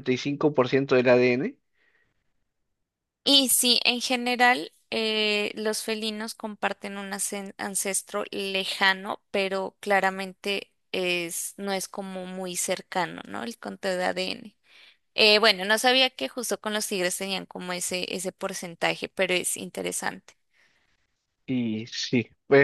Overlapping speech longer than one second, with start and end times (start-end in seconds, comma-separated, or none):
none